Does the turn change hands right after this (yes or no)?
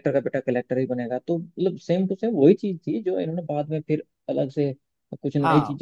no